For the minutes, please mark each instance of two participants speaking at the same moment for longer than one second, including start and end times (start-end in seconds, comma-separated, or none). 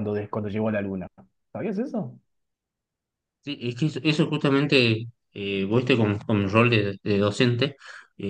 none